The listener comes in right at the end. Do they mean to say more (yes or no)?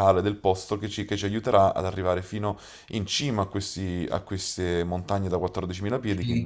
yes